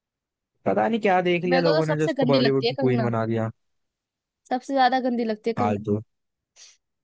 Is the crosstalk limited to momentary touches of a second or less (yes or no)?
no